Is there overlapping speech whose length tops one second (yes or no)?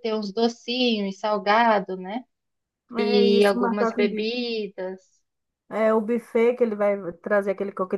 yes